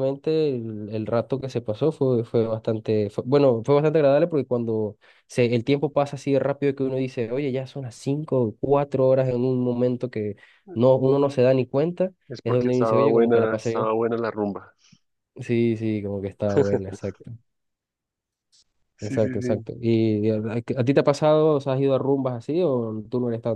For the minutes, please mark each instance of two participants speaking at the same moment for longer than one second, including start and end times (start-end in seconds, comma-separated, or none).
12.3-13.9